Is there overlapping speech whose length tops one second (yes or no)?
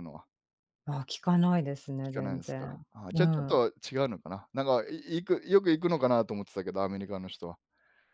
yes